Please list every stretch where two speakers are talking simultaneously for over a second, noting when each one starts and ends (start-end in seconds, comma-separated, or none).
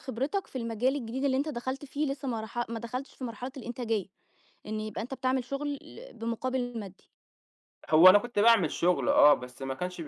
none